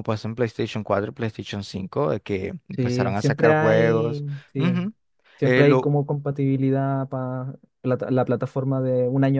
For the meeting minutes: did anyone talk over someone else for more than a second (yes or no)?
yes